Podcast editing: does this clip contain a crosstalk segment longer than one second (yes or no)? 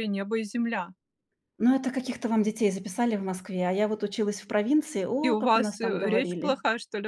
yes